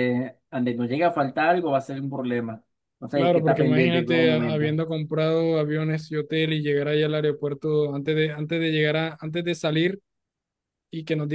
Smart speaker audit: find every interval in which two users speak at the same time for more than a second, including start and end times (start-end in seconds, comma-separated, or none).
3.1-4.8